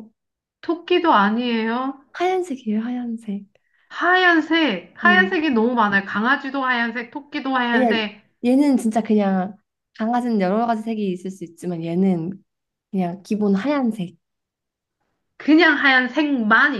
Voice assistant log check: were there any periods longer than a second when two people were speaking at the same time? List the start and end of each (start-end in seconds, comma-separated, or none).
none